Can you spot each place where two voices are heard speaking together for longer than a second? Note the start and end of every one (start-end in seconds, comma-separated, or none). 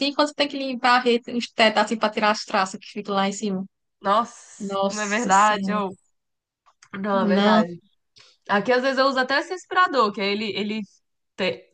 4.6-5.8